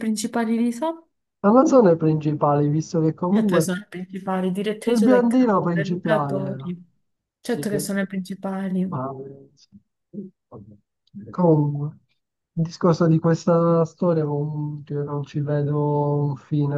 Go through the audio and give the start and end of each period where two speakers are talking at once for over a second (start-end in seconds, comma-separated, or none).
4.9-6.7